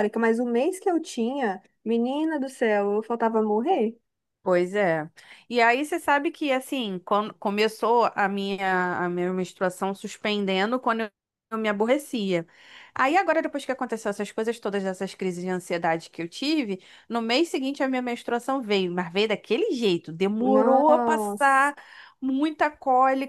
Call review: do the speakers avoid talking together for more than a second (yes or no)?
no